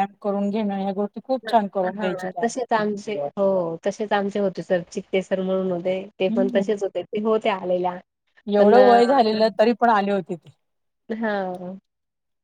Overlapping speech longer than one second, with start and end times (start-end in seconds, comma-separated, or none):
none